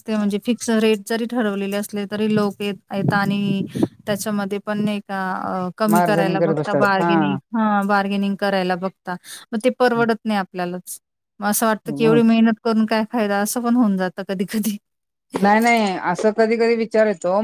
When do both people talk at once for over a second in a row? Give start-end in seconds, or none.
5.9-7.4